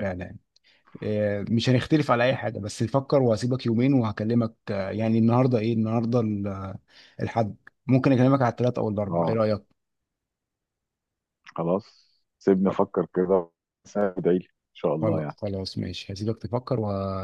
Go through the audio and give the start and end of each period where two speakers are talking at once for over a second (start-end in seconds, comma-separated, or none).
none